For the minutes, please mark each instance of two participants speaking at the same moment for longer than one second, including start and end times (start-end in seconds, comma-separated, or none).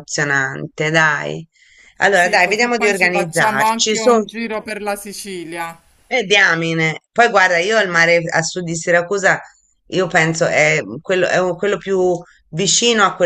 2.1-4.1